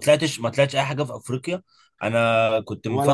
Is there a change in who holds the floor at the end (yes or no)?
no